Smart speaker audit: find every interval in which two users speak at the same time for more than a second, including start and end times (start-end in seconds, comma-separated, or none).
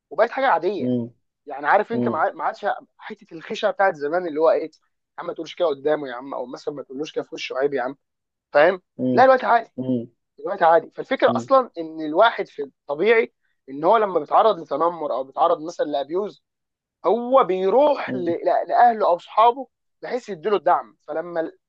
none